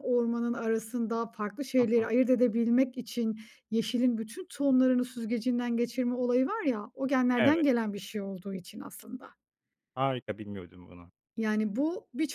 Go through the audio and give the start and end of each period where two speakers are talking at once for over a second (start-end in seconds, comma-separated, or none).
none